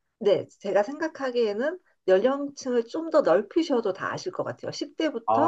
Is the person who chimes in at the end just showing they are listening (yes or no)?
yes